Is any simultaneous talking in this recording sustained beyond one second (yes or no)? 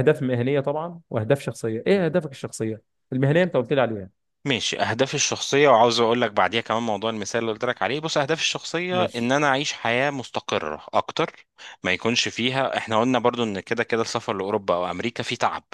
no